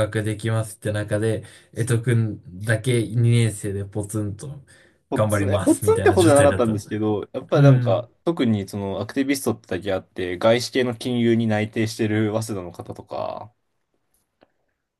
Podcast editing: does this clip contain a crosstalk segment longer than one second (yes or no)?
yes